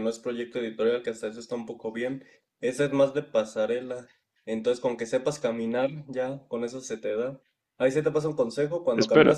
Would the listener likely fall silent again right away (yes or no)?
yes